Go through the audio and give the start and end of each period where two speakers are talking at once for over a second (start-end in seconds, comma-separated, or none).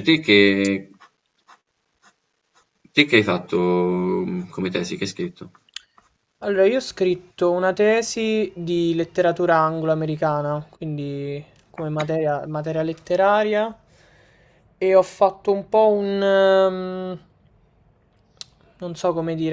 none